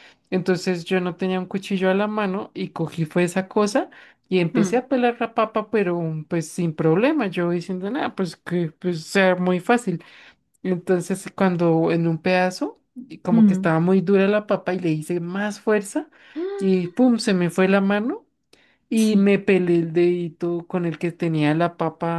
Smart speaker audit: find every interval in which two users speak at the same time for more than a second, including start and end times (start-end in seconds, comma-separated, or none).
none